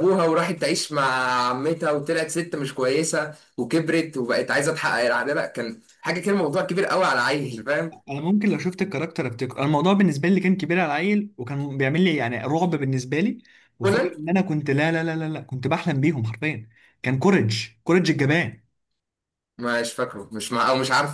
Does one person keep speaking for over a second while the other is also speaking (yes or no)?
no